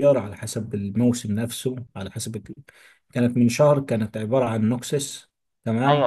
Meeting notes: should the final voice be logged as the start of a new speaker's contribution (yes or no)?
yes